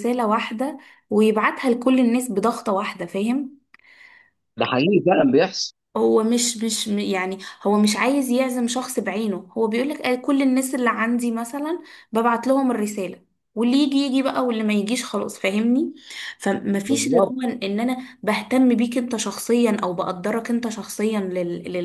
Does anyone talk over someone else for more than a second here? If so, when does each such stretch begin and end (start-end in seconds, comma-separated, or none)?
none